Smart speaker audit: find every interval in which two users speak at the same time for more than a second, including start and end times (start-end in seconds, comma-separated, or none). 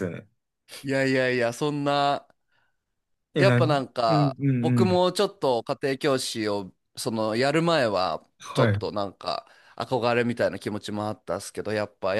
3.4-5.0